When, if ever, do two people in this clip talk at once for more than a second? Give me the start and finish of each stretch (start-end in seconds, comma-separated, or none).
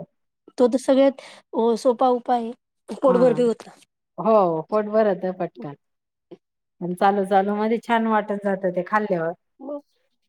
none